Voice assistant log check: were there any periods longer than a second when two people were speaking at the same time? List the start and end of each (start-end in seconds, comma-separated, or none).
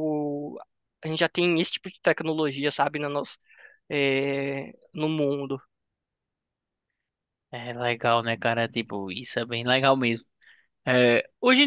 none